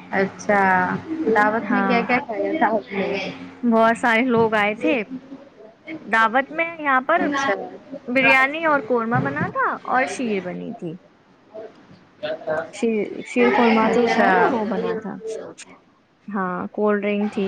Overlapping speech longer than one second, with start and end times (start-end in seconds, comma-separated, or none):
none